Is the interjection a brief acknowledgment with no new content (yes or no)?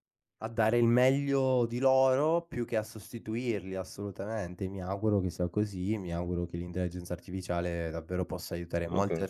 yes